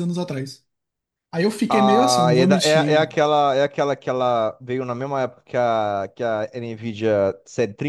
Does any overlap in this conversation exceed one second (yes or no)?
yes